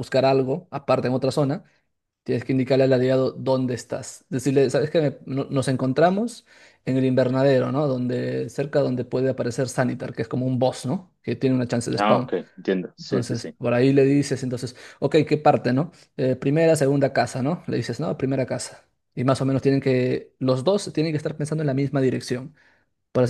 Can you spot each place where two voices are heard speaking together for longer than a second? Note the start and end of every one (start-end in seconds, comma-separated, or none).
none